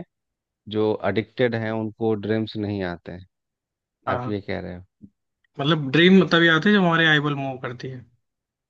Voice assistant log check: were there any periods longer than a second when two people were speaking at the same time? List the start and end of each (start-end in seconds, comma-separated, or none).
none